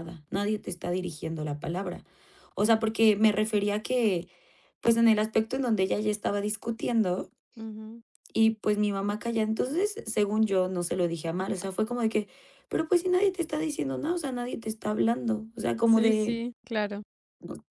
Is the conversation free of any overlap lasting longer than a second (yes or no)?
yes